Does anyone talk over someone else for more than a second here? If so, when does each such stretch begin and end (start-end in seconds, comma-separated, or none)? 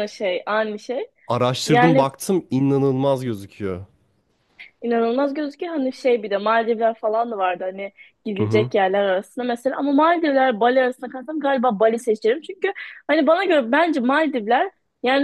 none